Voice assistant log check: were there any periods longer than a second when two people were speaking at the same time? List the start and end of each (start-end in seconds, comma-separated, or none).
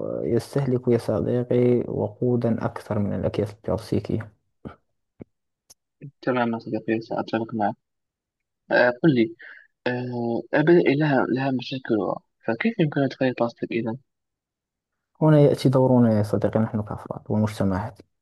none